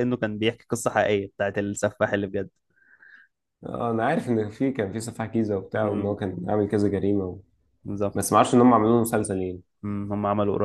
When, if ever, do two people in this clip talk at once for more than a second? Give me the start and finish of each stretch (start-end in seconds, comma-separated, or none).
none